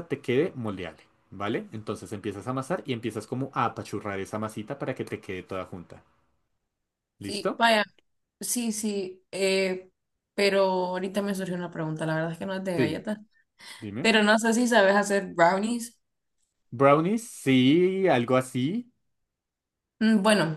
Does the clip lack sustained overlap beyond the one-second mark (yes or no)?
yes